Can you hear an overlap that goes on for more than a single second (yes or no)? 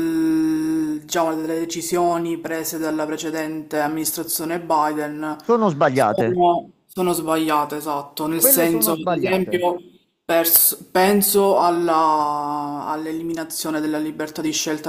yes